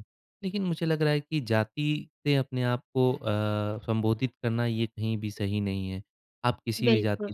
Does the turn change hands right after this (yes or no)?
no